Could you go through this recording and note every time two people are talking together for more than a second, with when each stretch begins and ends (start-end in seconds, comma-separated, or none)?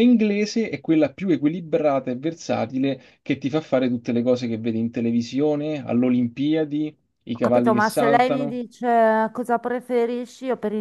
7.3-8.6